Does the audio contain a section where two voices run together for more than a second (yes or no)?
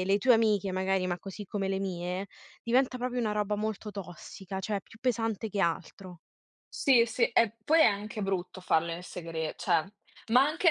no